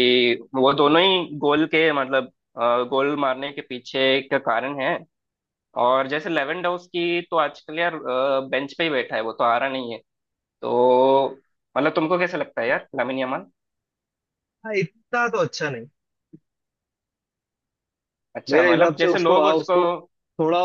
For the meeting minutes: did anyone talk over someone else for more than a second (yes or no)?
yes